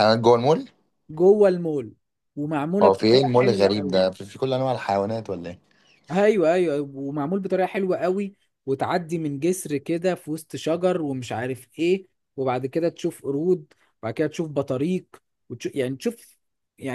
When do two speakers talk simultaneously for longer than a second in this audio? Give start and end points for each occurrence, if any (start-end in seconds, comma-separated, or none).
2.8-4.0